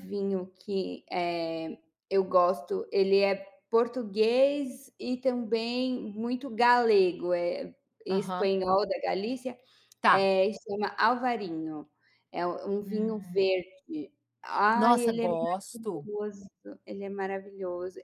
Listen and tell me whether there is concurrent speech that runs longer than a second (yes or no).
yes